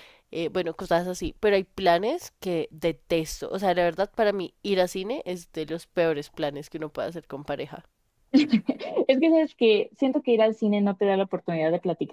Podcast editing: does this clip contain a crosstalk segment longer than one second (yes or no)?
no